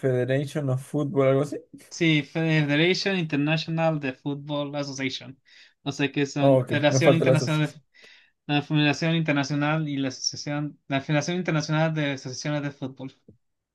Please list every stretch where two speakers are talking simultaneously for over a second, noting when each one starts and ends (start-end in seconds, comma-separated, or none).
6.4-7.8